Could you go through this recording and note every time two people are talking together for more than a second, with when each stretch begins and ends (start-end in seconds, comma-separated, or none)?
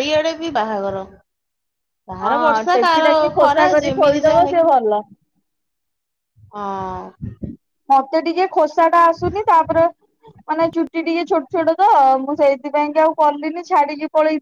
2.3-4.7